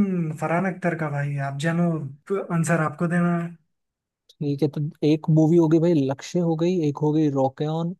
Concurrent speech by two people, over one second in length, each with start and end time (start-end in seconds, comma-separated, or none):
none